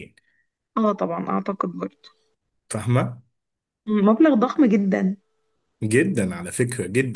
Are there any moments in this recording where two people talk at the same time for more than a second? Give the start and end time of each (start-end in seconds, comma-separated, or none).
none